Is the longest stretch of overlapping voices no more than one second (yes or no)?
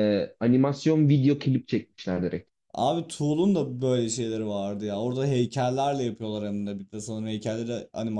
yes